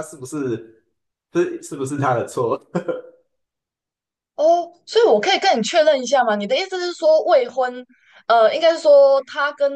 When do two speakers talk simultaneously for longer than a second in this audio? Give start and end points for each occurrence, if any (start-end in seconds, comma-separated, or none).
none